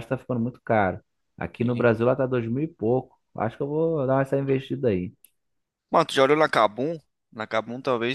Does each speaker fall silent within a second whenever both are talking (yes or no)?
yes